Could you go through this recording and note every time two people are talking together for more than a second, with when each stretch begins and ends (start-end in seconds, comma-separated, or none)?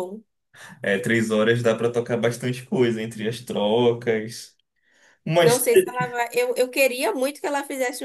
none